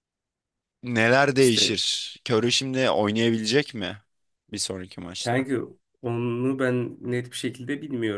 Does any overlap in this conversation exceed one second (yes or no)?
no